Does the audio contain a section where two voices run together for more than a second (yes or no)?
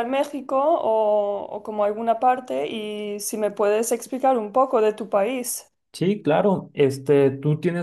no